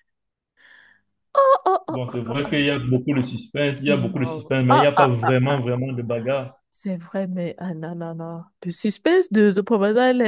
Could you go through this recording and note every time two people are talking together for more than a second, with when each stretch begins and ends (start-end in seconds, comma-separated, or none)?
4.1-5.7